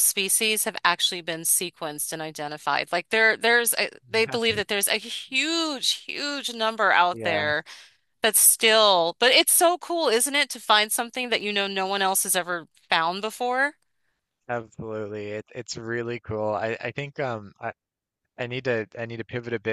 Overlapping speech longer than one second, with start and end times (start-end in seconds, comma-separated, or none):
none